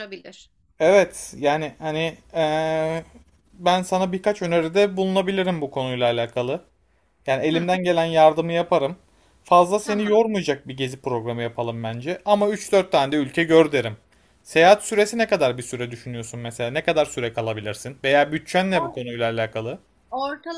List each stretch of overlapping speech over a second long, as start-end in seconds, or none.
none